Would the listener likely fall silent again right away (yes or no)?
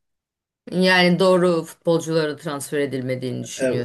no